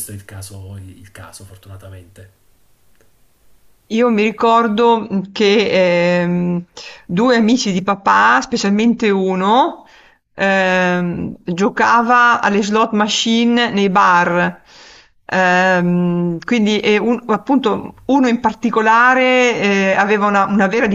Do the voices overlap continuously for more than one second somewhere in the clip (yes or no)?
no